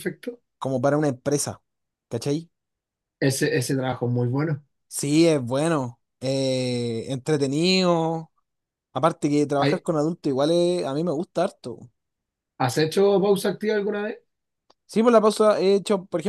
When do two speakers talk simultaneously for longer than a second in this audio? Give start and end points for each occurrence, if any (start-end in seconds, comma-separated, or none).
none